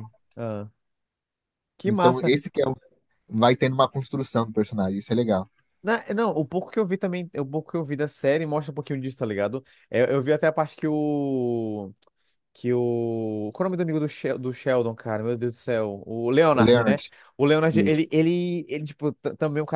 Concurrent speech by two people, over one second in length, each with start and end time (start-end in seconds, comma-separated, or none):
none